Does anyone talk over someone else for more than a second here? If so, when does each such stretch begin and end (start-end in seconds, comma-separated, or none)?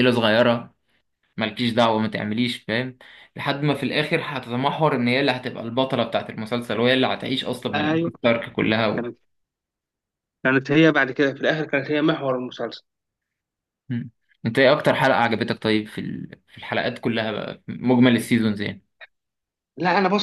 none